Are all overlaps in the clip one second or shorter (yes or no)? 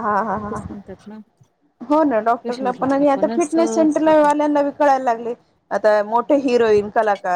no